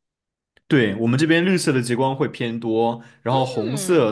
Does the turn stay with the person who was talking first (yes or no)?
yes